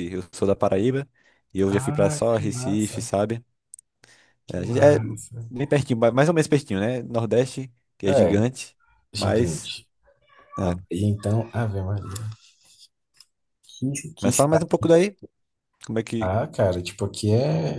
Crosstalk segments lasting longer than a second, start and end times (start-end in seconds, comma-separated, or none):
1.7-3.1